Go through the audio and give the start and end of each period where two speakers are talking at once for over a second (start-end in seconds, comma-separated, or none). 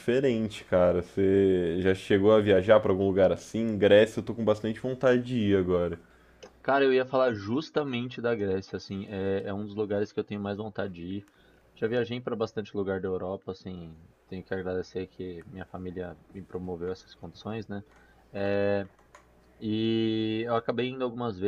none